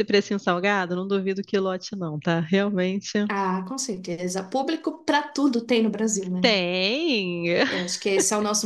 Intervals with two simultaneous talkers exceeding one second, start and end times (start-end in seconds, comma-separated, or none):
none